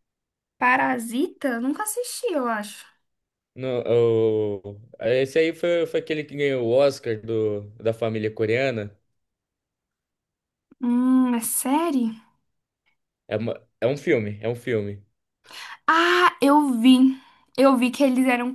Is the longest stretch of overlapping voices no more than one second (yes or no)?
yes